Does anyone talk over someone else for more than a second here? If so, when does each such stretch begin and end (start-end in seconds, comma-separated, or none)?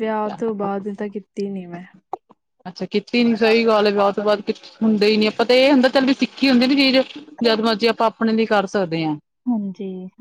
none